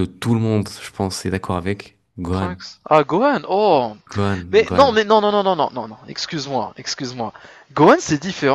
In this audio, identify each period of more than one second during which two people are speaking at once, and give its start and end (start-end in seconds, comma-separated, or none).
none